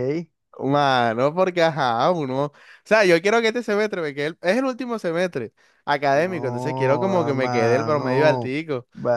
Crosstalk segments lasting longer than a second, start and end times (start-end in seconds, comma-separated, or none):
7.1-8.5